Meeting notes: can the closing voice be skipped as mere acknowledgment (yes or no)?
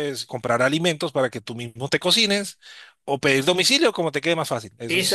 no